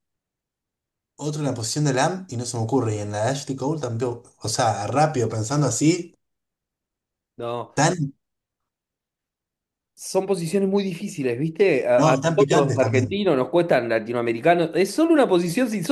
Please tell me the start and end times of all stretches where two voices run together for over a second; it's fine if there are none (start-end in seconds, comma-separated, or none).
12.0-13.2